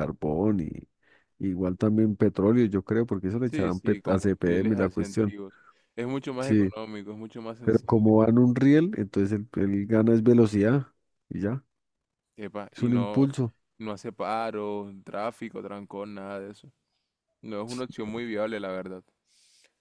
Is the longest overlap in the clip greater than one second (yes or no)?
yes